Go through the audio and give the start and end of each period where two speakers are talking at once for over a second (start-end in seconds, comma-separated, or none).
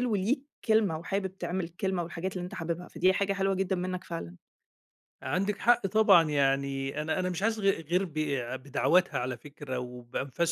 none